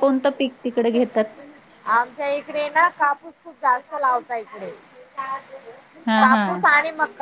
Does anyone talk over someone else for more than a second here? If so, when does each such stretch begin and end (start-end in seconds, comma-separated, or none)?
none